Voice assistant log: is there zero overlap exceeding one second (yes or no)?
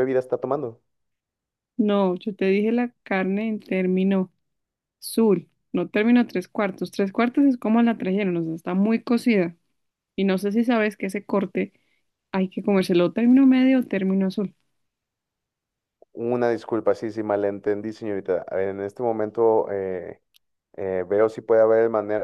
yes